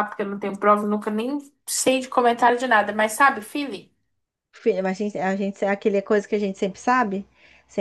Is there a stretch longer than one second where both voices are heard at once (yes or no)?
no